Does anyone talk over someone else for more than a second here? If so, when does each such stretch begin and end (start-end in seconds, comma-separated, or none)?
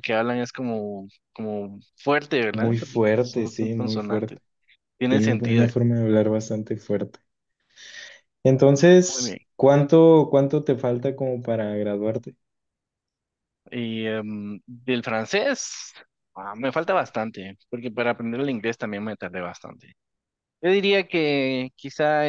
2.5-4.4